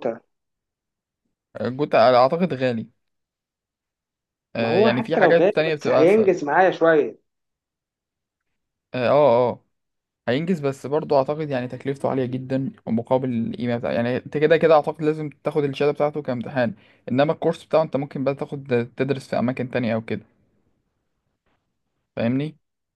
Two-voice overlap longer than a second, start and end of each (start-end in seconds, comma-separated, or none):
4.6-6.3